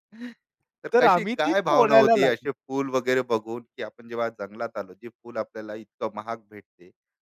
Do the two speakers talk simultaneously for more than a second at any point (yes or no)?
yes